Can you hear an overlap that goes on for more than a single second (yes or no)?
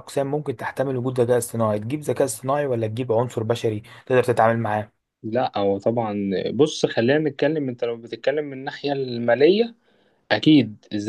no